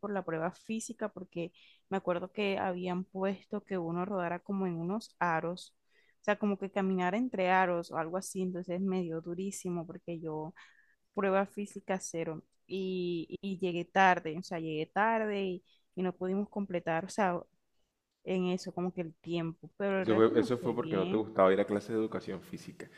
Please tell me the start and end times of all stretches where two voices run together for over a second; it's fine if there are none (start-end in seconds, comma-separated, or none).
20.0-21.2